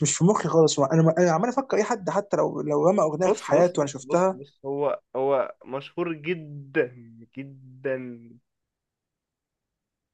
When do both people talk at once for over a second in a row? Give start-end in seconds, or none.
3.2-4.4